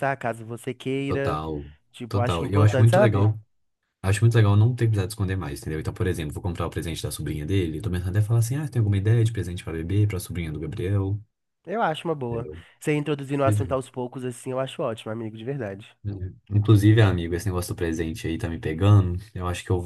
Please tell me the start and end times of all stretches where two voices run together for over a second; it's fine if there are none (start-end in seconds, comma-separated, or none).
2.1-3.3